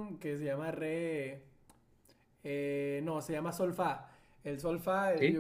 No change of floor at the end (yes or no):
yes